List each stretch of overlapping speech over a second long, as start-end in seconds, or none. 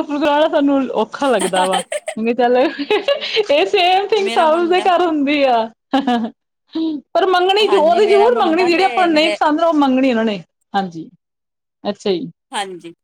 7.7-9.3